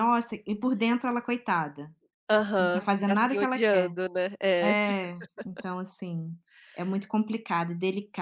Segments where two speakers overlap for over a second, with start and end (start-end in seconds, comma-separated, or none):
2.6-3.9